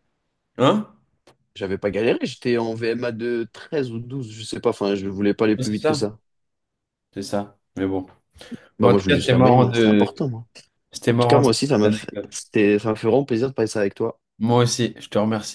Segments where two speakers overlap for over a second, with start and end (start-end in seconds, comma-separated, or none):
8.8-10.1